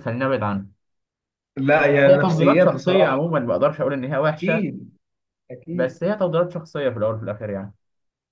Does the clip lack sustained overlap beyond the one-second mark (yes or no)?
no